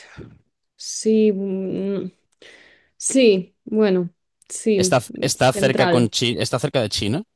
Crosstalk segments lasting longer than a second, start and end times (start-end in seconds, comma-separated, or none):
4.7-6.1